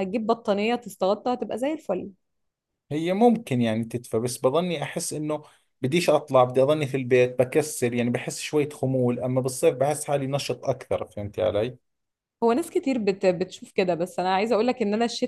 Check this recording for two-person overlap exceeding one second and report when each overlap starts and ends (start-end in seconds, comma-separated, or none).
none